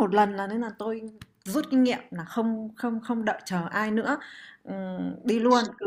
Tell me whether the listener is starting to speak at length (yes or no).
no